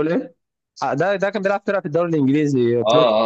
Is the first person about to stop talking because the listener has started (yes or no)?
yes